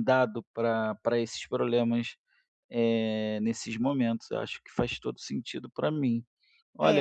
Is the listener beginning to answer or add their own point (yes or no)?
yes